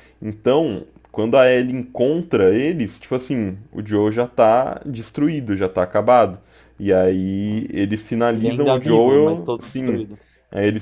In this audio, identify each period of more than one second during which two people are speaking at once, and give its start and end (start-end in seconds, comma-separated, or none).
8.3-10.0